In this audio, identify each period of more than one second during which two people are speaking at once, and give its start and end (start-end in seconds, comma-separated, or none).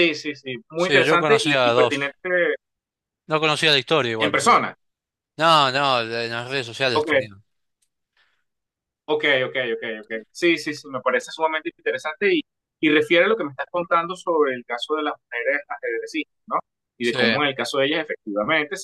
0.8-2.2